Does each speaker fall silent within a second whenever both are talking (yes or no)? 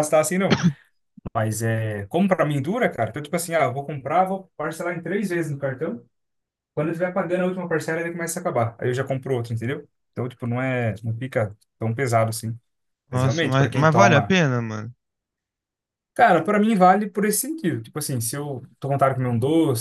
no